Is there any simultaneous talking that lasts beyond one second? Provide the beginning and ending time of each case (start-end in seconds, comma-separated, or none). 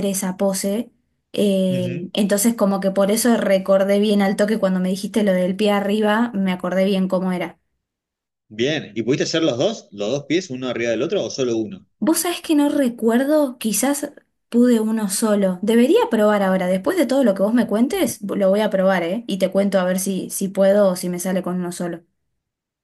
none